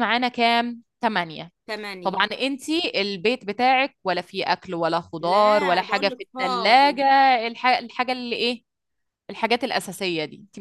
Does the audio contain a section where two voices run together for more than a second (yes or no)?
yes